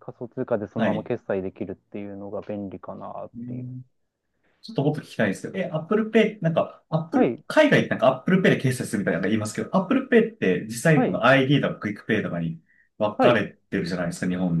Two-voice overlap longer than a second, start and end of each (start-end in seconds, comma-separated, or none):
none